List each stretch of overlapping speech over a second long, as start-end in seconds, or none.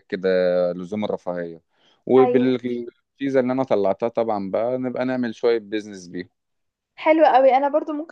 none